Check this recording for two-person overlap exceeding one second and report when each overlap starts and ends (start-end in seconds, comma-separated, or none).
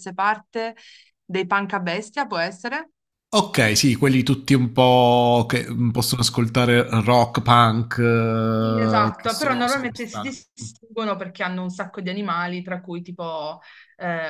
8.6-10.3